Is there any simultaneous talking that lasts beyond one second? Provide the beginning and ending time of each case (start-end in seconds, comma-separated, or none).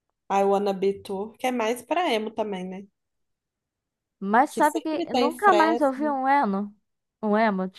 4.5-6.2